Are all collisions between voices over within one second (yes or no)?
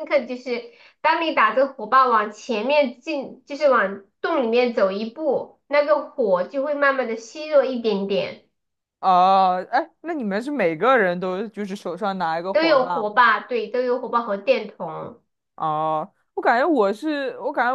yes